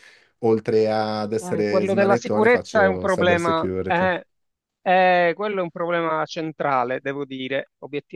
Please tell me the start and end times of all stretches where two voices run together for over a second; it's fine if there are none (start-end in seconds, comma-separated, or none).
1.4-4.2